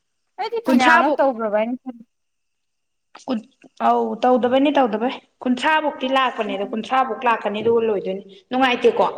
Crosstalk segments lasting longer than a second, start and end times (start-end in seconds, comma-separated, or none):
none